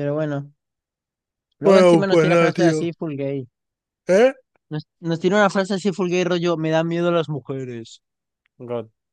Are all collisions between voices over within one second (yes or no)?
no